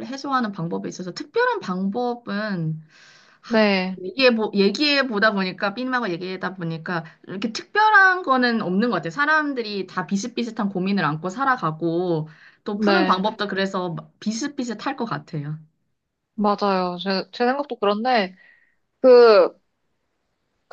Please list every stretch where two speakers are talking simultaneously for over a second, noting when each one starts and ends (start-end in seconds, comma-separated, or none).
none